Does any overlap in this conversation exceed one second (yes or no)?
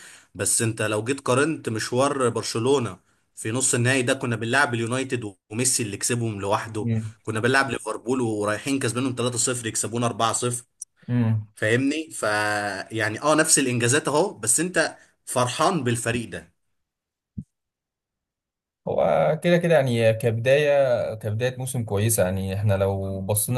no